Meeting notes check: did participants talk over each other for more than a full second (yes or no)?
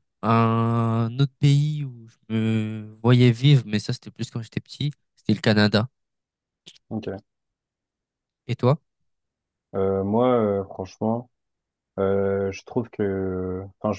no